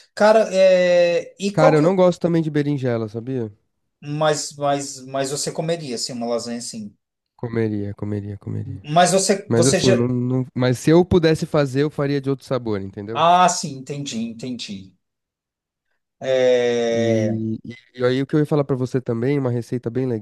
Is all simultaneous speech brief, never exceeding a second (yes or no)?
yes